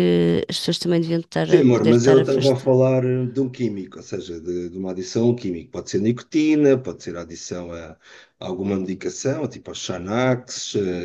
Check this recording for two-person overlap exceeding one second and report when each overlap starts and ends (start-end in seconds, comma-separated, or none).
1.4-2.8